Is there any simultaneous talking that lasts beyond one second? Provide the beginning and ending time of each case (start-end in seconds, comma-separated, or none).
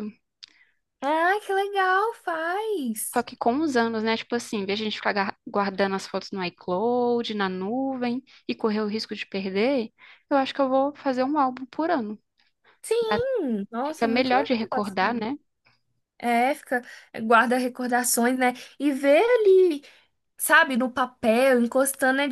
13.8-15.3